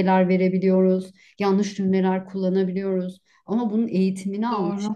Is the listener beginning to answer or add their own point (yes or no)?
no